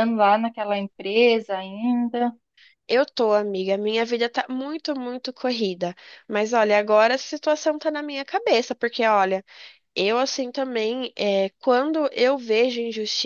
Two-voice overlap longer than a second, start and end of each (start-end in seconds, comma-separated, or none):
none